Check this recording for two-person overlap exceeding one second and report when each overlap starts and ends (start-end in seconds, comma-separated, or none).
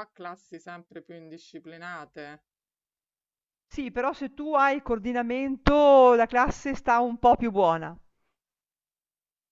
none